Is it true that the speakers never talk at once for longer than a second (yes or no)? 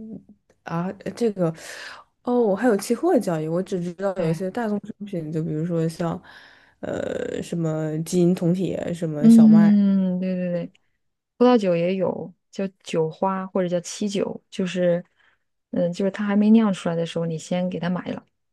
yes